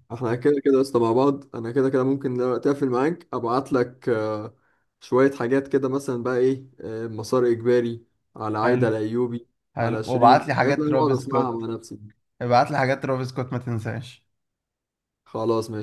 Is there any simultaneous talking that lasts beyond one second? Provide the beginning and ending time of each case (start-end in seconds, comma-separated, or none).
9.8-11.7